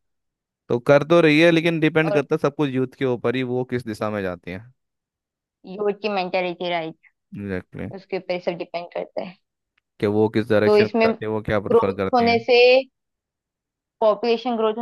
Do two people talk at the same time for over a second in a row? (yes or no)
yes